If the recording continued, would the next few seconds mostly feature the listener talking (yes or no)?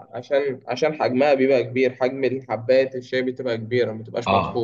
yes